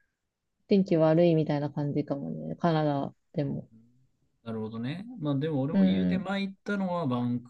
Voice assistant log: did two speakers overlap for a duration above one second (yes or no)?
no